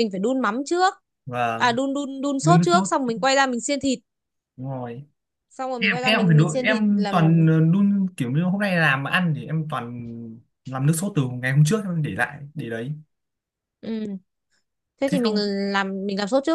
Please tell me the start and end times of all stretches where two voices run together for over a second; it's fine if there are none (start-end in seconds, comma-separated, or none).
5.8-7.4